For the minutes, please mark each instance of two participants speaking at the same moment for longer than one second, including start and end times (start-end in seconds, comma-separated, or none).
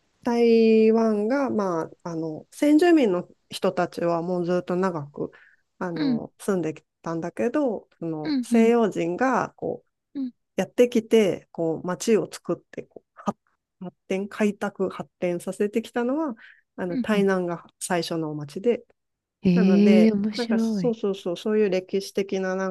19.5-20.9